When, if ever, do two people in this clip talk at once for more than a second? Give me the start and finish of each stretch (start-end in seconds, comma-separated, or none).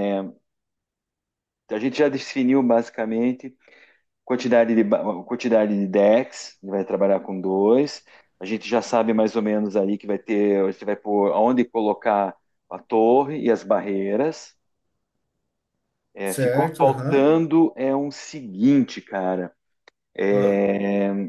16.2-17.4